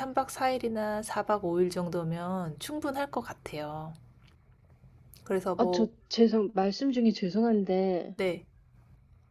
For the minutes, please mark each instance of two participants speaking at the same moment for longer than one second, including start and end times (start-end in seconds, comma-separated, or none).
none